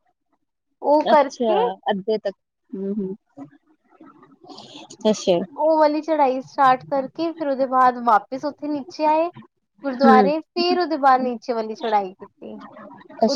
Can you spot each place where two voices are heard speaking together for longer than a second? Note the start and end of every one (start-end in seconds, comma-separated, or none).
none